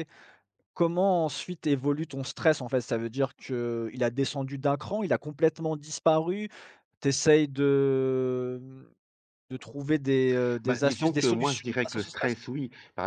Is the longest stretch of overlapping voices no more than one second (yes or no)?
no